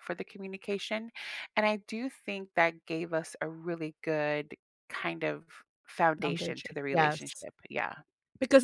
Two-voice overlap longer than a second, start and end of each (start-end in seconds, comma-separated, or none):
6.2-7.5